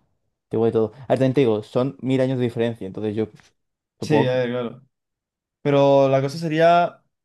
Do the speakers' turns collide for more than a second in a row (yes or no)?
no